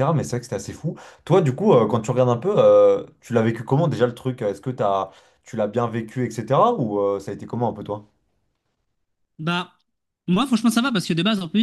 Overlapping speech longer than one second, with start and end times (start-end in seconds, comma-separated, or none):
none